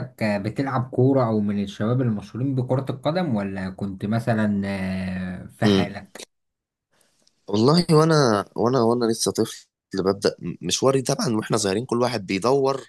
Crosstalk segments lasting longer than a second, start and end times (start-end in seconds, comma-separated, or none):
none